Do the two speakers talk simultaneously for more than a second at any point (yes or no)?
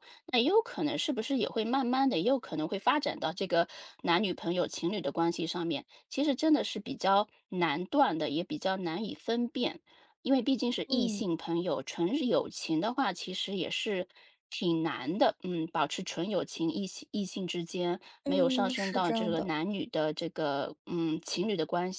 yes